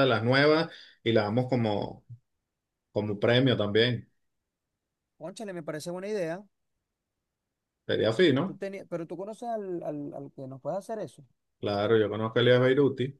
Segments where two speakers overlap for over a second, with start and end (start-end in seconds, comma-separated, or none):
none